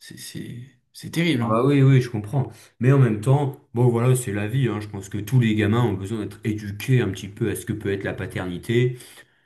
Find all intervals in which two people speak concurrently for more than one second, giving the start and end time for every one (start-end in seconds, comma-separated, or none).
none